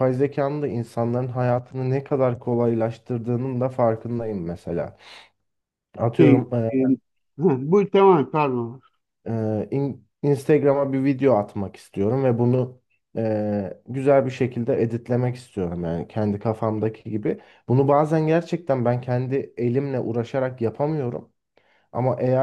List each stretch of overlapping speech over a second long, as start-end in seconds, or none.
none